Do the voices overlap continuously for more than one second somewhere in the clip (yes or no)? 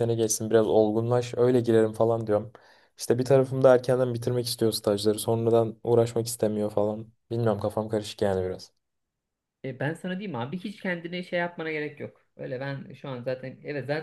no